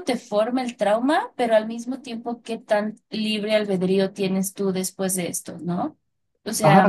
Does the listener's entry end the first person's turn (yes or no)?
yes